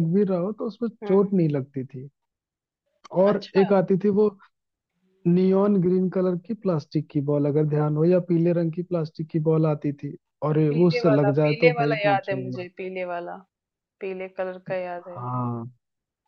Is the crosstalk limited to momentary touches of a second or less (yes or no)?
no